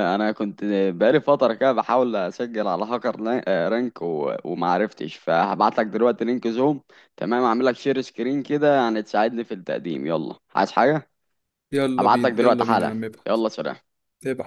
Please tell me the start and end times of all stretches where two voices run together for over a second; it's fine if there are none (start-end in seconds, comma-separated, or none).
12.0-13.4